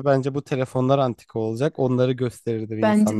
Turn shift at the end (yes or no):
yes